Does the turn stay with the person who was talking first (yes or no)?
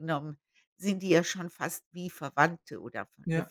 yes